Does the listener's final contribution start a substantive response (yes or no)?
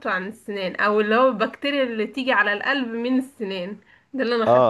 yes